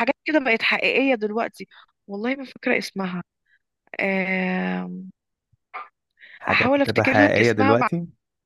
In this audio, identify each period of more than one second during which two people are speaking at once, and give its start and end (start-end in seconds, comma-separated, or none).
6.5-7.8